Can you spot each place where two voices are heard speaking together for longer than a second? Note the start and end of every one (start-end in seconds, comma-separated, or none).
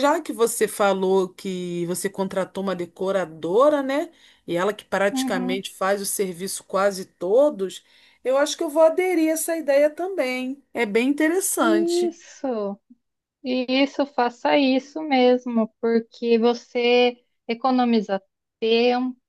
none